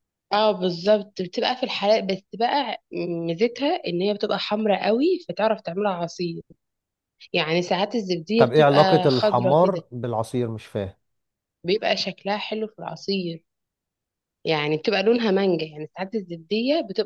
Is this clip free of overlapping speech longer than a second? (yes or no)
no